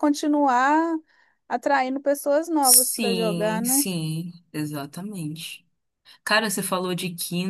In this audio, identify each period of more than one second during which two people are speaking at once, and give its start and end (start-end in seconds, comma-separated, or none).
2.6-3.8